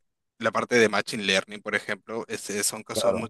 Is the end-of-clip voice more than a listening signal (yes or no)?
no